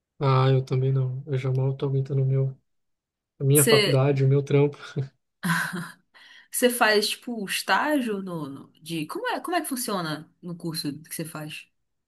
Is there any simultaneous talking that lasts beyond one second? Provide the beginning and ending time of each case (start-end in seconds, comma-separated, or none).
none